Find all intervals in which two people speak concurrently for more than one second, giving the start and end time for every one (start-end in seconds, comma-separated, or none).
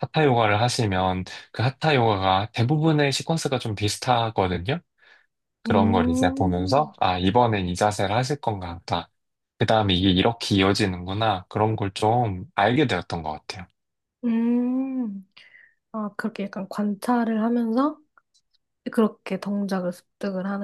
5.7-6.9